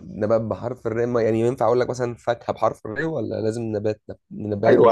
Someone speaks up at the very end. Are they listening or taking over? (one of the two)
taking over